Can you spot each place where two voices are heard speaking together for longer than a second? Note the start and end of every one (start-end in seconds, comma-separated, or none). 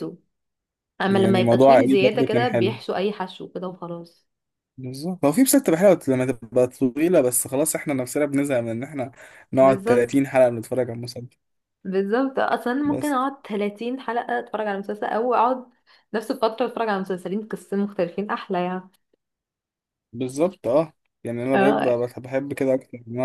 1.1-2.8